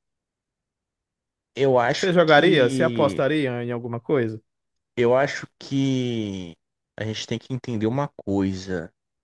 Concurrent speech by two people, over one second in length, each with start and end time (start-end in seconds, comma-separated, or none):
1.9-3.2